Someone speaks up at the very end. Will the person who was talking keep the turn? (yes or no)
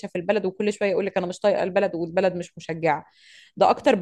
yes